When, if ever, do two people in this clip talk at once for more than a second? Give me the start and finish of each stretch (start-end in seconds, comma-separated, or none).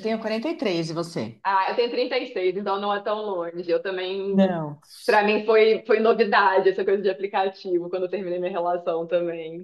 none